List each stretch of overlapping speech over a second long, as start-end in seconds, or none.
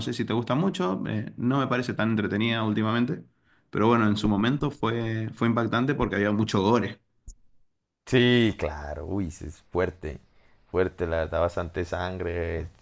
none